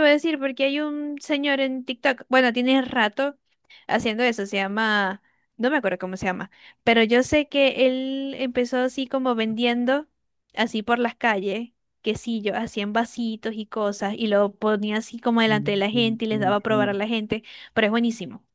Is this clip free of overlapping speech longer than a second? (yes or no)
no